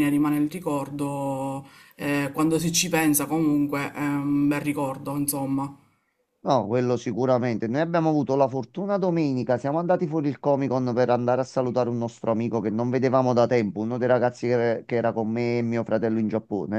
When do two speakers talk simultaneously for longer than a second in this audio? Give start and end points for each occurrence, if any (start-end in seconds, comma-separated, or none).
none